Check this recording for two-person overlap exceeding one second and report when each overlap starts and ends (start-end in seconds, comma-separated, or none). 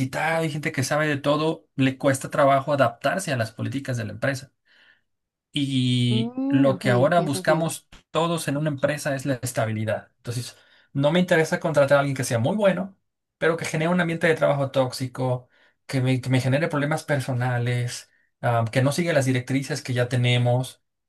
6.1-7.7